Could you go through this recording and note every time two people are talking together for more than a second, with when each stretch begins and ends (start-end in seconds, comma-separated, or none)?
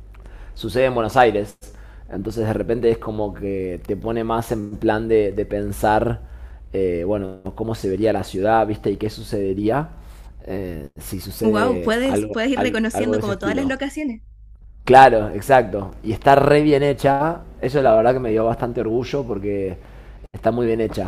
11.4-13.7